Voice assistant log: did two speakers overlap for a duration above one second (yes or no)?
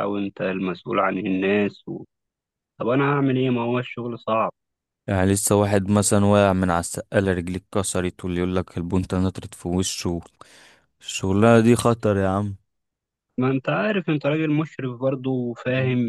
no